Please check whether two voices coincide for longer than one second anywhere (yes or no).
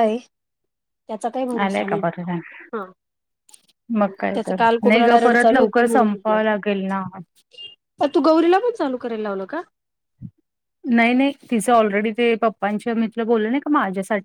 yes